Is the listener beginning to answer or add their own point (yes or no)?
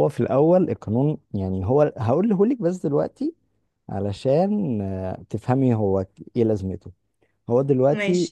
no